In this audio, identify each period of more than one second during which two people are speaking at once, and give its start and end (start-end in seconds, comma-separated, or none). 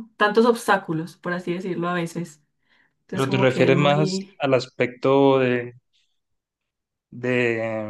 3.1-4.4